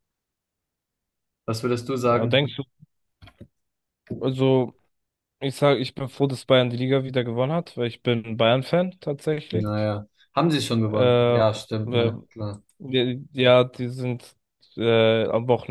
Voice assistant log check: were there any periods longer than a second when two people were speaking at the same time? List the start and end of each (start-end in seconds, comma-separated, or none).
10.9-12.1